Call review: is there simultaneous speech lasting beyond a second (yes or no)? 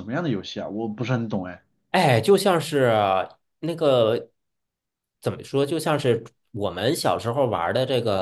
no